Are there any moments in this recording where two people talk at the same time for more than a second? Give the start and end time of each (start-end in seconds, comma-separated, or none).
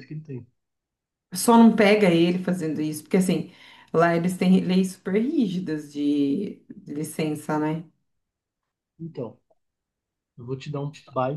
none